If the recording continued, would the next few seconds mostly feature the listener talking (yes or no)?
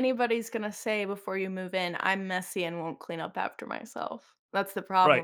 yes